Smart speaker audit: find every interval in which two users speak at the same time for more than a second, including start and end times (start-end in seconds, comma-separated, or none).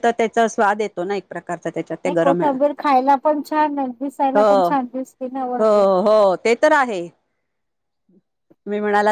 4.4-5.9